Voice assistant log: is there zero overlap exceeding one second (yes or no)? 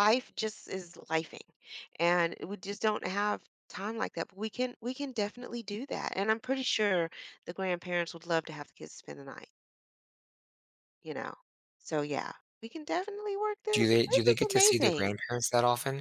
no